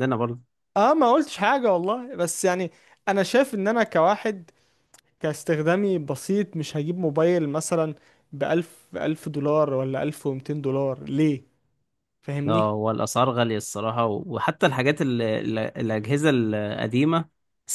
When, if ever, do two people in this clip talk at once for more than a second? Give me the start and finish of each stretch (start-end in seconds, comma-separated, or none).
none